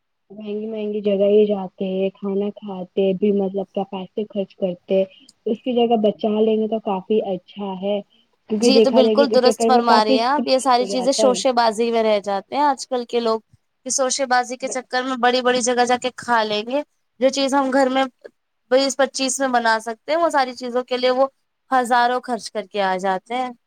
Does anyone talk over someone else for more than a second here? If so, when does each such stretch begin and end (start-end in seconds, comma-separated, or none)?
8.6-11.4